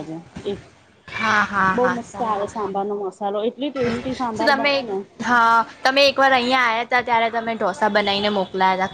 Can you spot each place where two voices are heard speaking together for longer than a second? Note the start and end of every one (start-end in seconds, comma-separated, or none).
none